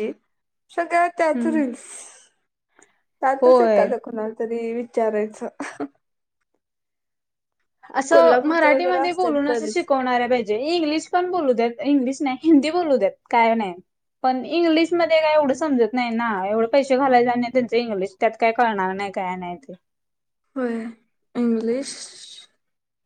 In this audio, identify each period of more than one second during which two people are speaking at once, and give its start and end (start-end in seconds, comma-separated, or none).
8.1-9.9